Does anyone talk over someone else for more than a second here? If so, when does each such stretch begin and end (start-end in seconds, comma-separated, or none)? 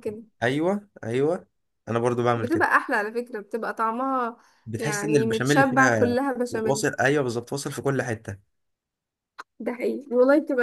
4.8-6.9